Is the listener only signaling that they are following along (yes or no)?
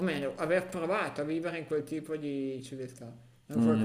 no